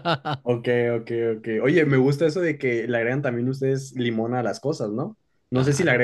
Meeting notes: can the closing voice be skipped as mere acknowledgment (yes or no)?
yes